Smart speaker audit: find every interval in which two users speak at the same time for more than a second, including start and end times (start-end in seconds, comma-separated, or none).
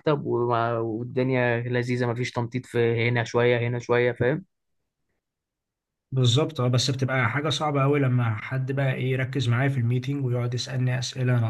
none